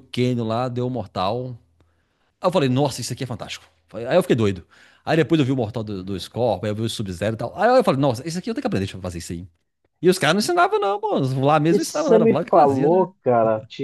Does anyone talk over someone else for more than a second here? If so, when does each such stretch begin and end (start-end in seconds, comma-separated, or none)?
11.7-13.1